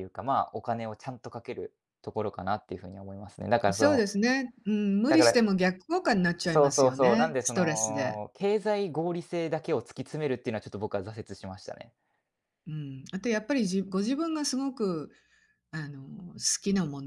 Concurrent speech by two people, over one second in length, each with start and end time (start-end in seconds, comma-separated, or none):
6.5-8.2